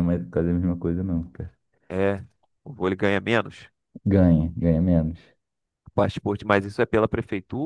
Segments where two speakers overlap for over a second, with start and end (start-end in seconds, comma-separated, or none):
none